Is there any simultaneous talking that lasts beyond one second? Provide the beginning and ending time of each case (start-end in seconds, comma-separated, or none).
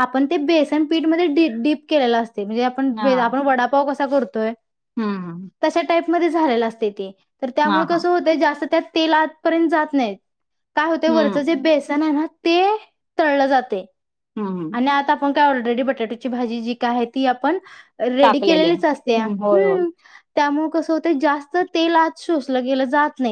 18.2-19.8